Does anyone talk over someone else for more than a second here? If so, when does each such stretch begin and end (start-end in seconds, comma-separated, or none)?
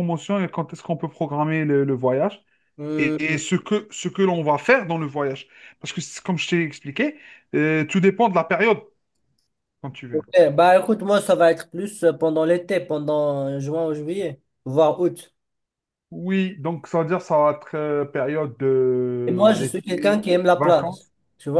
19.3-20.9